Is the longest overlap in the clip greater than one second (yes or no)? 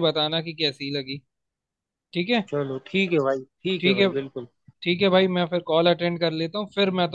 no